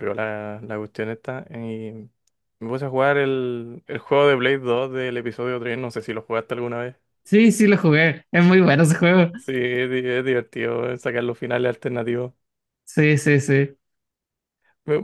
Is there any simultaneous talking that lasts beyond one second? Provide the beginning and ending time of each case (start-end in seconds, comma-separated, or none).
none